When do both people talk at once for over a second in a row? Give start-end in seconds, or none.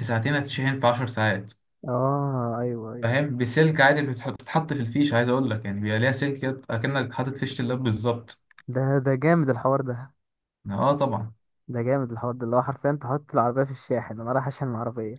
none